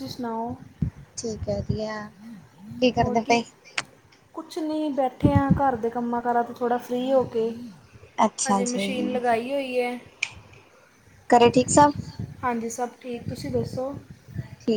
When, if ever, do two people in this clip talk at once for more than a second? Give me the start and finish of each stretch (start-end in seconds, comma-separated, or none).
none